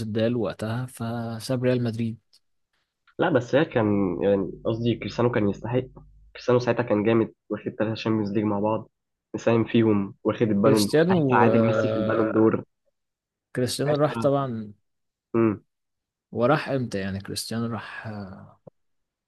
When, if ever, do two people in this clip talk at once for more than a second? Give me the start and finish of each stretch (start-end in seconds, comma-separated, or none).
10.6-12.3